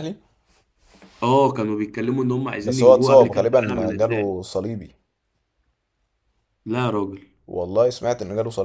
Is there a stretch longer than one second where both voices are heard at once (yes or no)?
yes